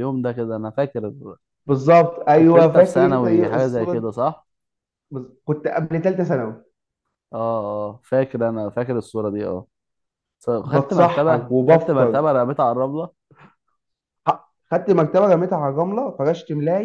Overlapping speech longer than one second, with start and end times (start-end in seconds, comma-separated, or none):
2.4-4.1, 10.6-12.2